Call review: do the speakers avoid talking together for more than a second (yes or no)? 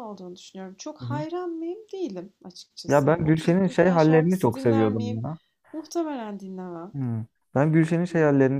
no